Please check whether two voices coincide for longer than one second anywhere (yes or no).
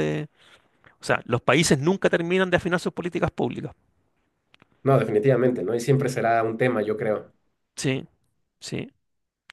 no